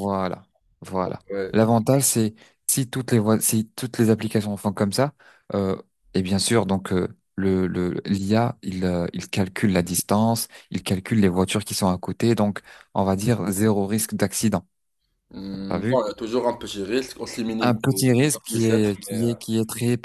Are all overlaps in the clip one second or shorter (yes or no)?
no